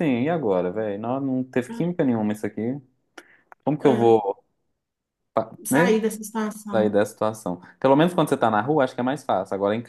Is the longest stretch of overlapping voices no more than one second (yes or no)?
yes